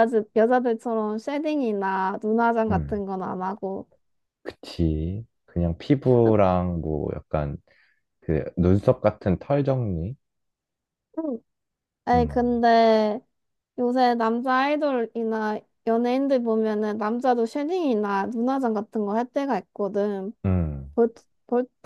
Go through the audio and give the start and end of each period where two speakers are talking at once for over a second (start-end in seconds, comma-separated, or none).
none